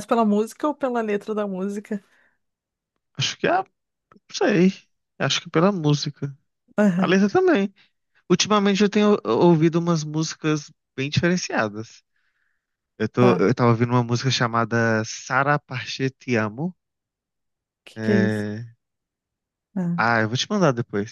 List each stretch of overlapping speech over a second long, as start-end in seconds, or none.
none